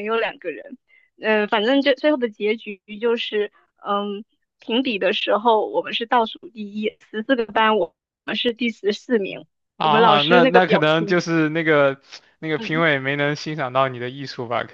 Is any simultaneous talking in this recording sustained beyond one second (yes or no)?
yes